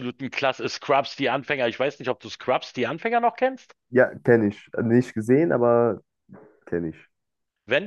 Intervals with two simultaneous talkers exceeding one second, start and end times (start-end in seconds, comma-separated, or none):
none